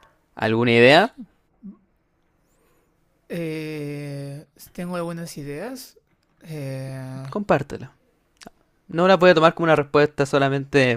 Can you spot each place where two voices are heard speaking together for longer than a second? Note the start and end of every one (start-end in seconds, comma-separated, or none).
none